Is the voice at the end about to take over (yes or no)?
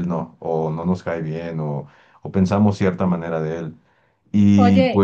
yes